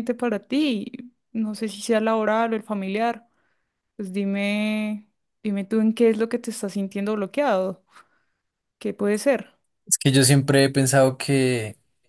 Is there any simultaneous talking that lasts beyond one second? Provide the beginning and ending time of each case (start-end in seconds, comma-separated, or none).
none